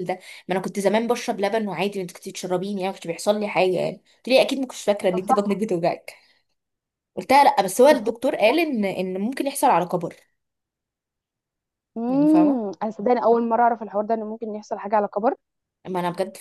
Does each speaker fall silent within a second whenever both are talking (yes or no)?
yes